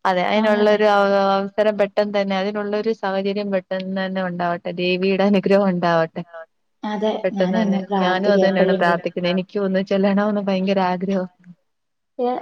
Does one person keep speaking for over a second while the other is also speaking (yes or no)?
yes